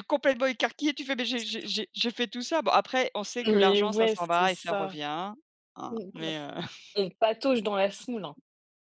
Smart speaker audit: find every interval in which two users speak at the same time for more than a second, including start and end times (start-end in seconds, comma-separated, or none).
3.5-4.9